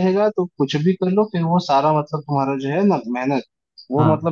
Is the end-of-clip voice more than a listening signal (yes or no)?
no